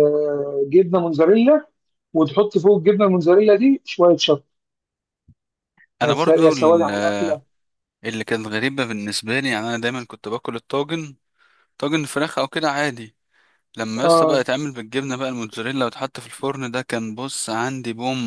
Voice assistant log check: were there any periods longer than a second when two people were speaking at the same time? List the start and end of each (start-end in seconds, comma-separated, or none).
6.0-7.4